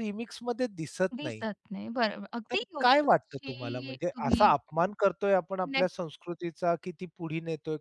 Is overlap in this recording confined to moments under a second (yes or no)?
no